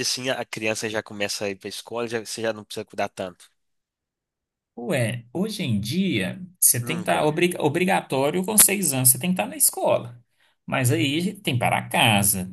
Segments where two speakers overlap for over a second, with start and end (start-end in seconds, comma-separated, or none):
none